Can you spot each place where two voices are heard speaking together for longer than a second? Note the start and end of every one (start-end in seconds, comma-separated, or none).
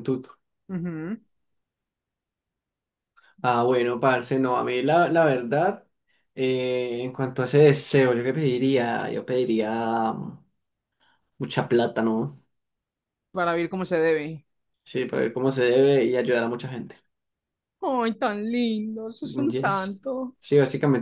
none